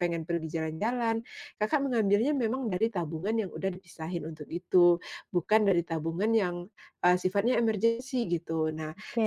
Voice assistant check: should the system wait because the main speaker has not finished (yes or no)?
yes